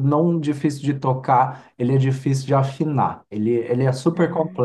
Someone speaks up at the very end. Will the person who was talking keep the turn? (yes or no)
yes